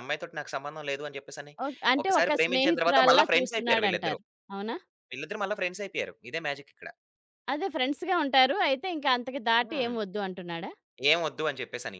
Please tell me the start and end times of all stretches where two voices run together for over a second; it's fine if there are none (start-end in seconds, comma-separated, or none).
2.0-4.2